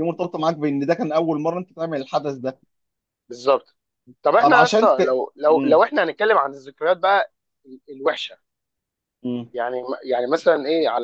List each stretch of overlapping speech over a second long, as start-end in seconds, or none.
4.4-5.8